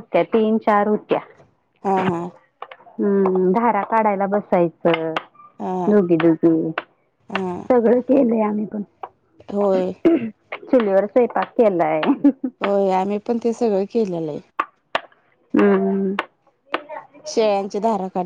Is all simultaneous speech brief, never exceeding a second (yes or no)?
yes